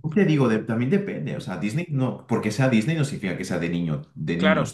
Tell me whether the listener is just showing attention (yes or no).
no